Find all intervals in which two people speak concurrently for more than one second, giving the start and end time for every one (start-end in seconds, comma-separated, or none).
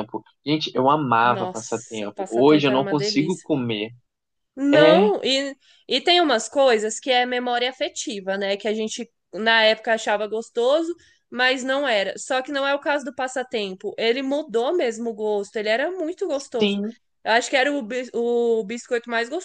1.2-3.5